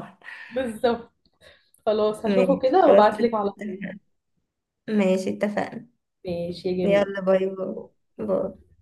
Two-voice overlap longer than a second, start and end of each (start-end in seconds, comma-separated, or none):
2.2-3.8